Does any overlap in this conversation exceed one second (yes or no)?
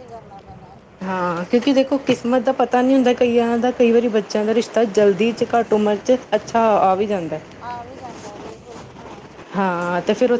no